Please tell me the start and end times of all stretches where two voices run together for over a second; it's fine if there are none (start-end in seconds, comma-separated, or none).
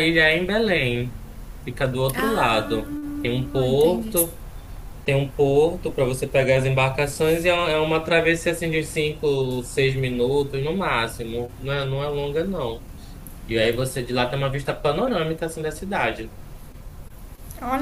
2.1-4.1